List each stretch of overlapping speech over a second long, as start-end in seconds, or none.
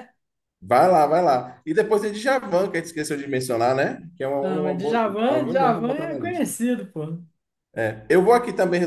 4.4-6.5